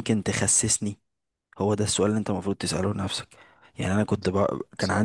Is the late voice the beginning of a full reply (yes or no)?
no